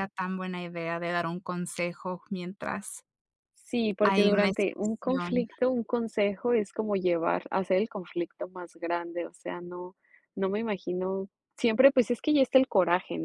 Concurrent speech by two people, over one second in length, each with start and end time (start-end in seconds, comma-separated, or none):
4.1-5.5